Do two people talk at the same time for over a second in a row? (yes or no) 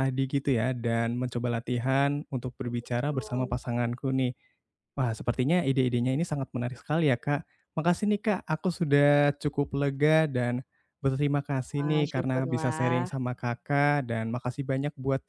yes